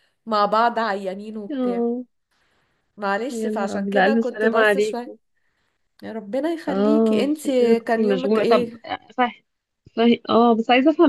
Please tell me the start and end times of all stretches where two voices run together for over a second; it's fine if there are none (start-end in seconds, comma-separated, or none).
3.3-5.1, 6.7-8.7